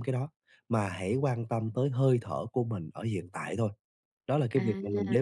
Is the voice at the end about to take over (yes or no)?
no